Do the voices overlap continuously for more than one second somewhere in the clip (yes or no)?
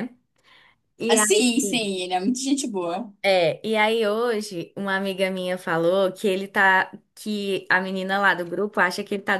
no